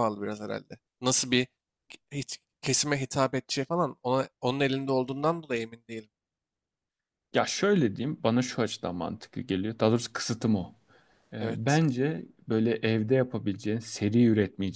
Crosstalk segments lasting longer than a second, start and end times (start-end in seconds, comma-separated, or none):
none